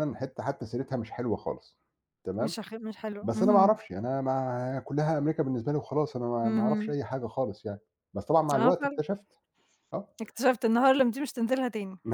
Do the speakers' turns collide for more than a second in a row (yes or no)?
no